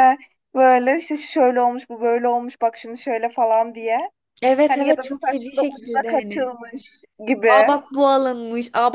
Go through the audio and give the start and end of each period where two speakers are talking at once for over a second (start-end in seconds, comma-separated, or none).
4.7-6.5